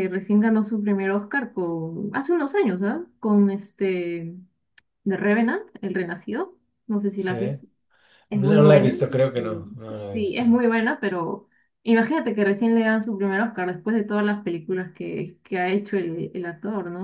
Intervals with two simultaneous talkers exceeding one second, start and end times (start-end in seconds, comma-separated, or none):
8.3-10.6